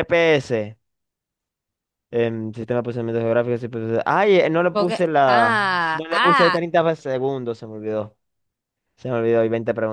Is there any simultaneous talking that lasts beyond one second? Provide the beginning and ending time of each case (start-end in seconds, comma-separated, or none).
4.6-6.7